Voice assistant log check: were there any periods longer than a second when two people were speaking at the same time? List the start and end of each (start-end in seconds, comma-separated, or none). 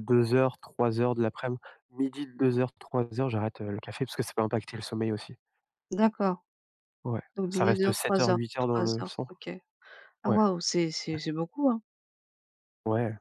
7.3-9.3